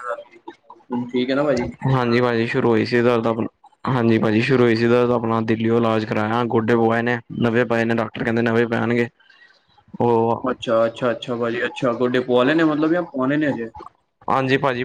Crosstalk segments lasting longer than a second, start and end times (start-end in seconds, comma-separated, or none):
none